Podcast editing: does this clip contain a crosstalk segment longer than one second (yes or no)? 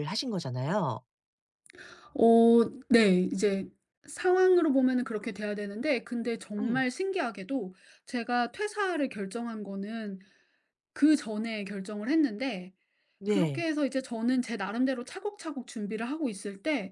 no